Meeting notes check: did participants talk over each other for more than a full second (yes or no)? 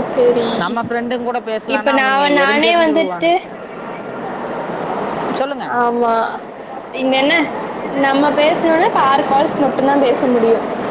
yes